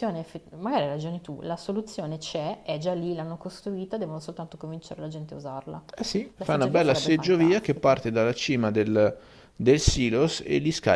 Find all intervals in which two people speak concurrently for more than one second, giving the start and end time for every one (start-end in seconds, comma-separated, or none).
6.4-8.0